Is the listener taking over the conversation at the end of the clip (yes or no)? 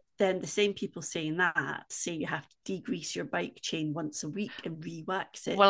yes